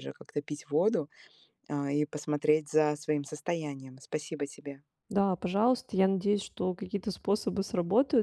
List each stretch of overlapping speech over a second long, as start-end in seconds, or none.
none